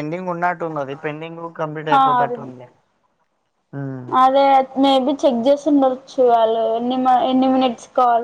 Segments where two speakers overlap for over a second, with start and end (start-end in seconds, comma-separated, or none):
none